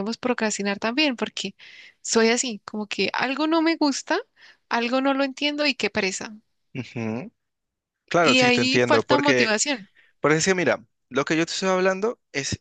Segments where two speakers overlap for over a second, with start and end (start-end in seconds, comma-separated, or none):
8.2-9.6